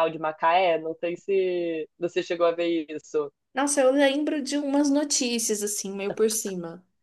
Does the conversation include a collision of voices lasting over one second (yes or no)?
no